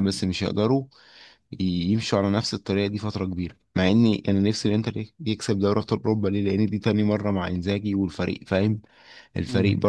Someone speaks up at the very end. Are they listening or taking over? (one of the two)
listening